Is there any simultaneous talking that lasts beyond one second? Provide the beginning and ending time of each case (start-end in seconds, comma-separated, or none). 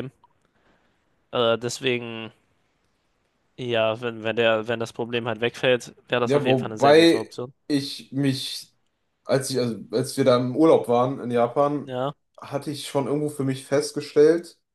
6.2-7.5